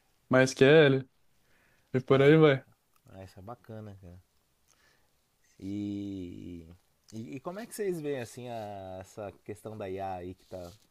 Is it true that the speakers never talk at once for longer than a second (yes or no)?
yes